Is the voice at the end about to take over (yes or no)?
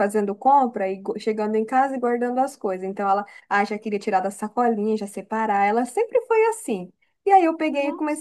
no